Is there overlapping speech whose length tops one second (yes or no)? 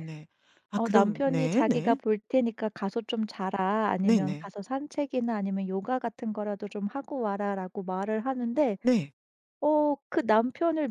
yes